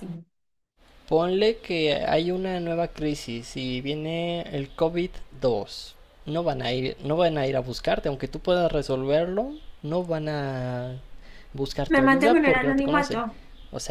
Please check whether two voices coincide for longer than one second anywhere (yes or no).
yes